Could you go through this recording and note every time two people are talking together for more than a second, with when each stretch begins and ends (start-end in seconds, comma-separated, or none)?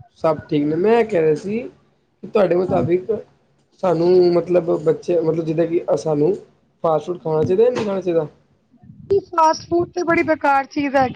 none